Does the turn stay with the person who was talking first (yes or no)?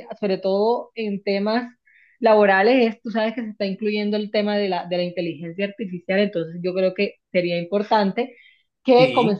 yes